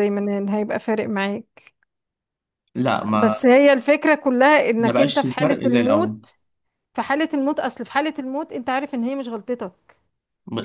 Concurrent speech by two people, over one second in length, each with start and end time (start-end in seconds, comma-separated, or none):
4.8-6.2